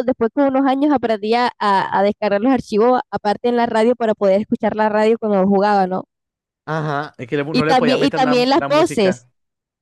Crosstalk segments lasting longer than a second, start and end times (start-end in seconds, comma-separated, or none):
7.5-9.3